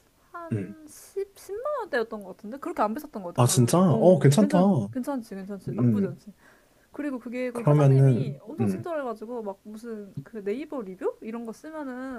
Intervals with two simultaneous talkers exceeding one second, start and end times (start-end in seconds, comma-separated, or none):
3.4-4.6, 7.5-8.8